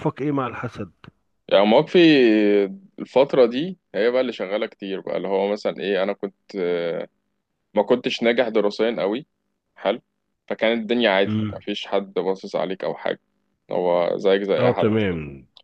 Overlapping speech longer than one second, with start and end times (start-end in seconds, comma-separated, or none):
none